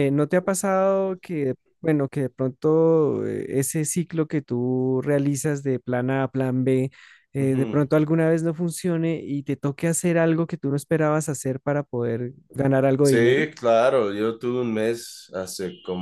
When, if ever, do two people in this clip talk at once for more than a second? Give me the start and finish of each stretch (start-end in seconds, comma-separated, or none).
none